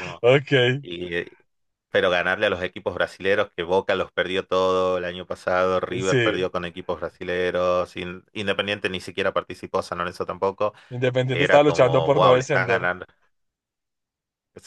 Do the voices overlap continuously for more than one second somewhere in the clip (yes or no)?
yes